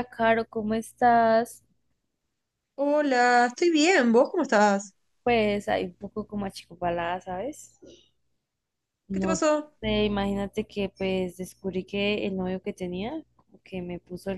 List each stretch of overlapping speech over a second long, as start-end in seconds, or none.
none